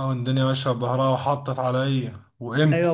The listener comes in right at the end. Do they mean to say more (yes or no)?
no